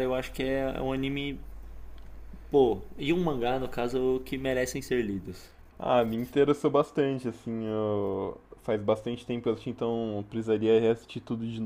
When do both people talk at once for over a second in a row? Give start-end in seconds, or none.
none